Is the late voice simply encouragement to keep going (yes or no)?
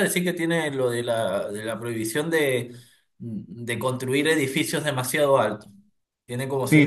no